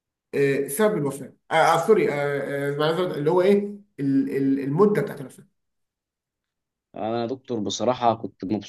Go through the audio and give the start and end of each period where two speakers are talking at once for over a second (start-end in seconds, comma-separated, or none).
none